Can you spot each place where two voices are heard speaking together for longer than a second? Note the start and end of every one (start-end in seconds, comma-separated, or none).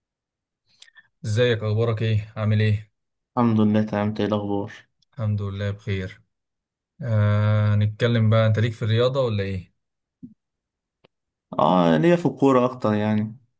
none